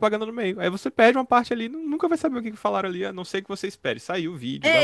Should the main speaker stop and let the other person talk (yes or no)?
yes